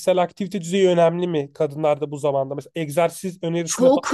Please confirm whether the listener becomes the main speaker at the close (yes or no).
yes